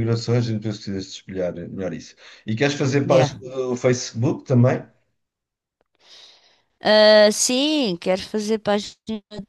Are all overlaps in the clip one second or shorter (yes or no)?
yes